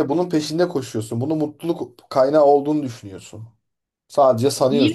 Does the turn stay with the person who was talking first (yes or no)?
no